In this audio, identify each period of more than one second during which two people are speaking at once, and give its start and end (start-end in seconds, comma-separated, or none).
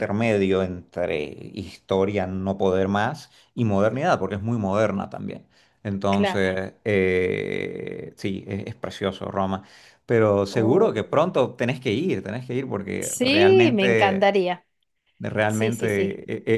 13.0-14.3